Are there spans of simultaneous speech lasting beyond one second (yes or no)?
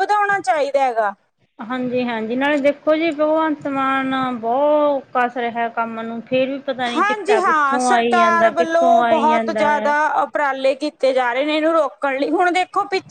yes